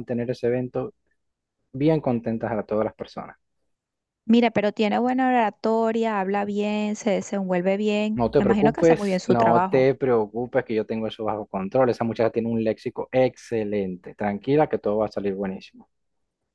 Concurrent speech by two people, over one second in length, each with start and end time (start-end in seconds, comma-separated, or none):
8.1-9.9